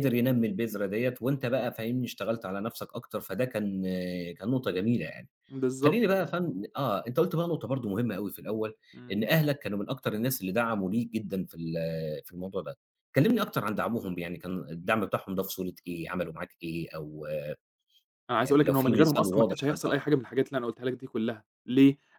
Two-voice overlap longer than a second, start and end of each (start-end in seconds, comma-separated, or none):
18.4-20.0